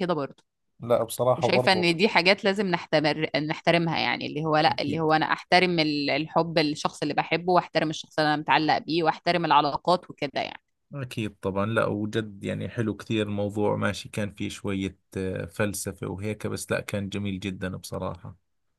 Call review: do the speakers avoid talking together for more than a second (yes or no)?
yes